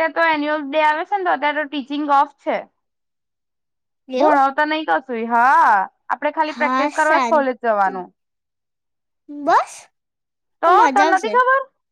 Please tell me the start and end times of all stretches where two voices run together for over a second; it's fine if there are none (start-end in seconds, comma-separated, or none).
6.5-7.9